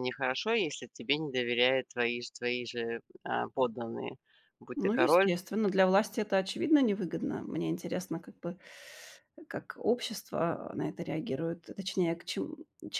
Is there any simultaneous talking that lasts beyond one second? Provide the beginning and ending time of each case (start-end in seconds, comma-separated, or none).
none